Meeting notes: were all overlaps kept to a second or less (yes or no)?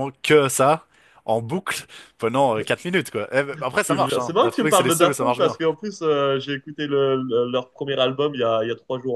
no